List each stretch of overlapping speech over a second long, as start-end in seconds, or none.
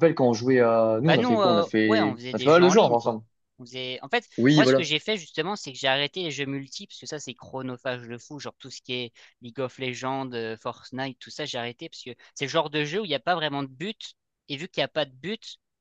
1.1-3.2